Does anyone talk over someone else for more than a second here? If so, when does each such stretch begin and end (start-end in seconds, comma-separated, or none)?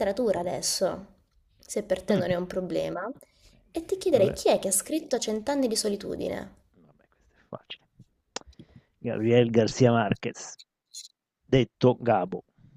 none